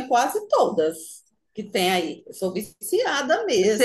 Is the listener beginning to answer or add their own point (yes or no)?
yes